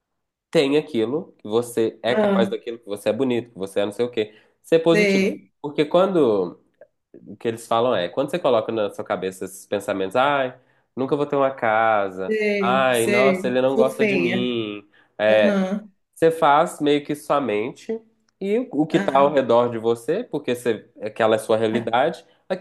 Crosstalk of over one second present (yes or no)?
yes